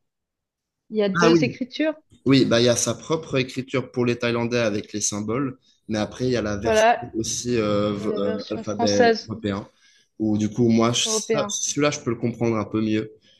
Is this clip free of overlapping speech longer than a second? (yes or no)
no